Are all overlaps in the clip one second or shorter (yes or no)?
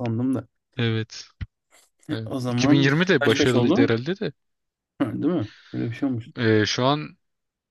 no